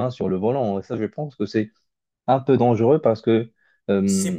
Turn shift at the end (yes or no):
yes